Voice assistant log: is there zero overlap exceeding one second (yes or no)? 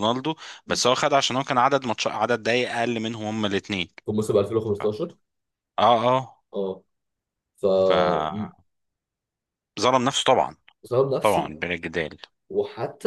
yes